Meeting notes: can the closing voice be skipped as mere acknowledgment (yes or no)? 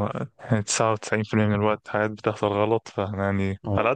yes